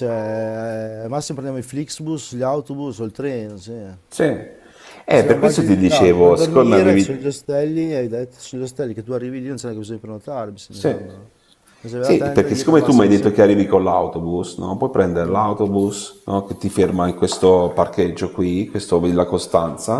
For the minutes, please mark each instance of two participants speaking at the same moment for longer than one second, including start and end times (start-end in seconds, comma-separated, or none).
5.1-7.3, 12.0-13.6